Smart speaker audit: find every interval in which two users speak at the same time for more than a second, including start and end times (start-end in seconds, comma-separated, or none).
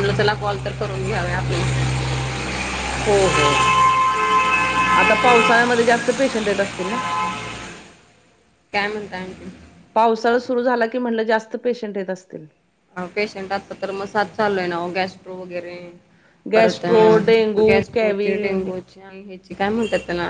16.5-18.3